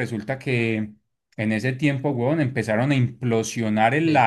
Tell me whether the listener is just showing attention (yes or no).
yes